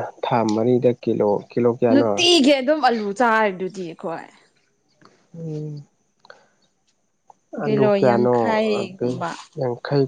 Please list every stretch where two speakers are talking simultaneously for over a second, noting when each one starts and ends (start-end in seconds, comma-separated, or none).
7.6-9.1